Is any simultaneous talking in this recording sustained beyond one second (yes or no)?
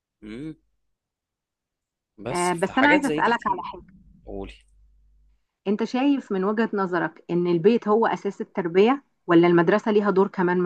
yes